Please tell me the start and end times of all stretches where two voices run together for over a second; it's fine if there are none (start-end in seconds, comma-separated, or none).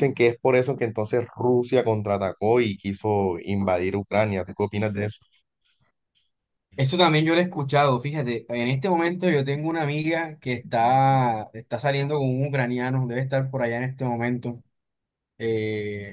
none